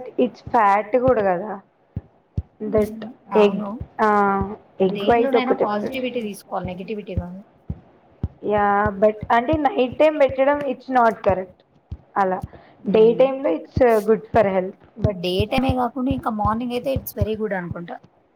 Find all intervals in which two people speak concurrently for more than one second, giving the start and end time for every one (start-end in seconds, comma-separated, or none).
5.0-6.9